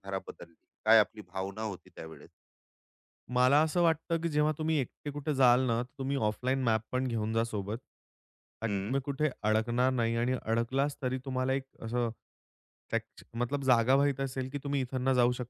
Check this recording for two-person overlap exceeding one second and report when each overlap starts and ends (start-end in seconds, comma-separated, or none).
none